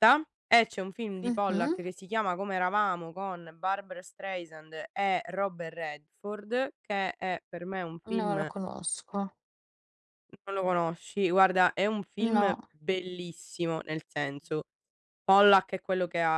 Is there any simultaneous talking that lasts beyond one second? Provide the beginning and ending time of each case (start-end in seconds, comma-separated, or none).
none